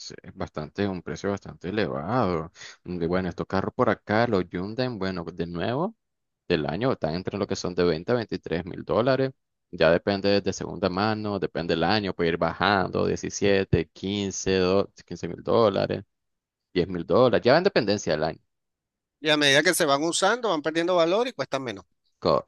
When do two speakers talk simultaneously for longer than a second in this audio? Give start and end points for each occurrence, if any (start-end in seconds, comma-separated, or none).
none